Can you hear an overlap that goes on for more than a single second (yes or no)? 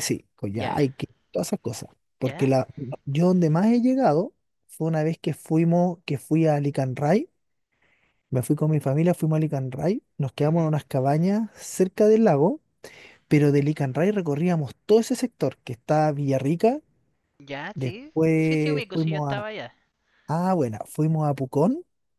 yes